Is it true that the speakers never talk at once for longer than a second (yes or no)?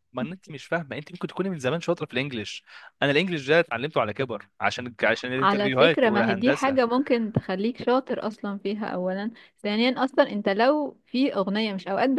no